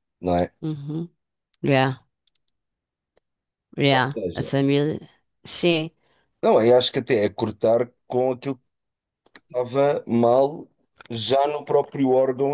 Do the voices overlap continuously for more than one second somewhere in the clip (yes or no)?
no